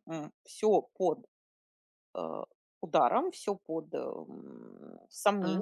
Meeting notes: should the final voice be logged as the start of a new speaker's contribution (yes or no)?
no